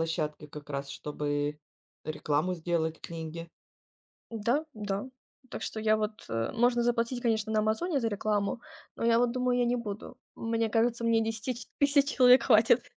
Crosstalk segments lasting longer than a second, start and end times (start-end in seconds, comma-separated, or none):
none